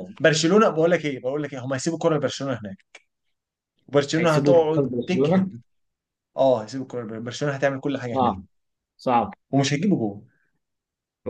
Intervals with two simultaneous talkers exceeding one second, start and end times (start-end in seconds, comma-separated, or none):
4.2-5.5